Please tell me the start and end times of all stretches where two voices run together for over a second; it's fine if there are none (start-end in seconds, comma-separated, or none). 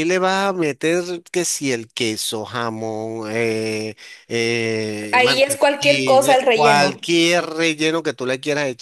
5.1-7.1